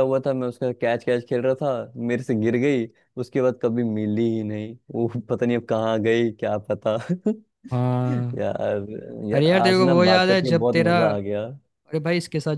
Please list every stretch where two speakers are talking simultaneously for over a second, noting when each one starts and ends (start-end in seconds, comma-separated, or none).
9.3-11.0